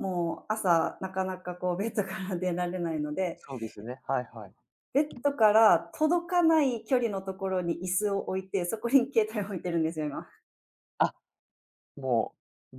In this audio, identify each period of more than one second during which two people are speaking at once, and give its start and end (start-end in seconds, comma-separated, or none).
none